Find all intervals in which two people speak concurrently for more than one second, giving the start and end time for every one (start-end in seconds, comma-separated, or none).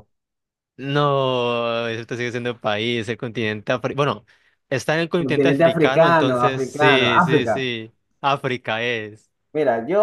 5.2-7.6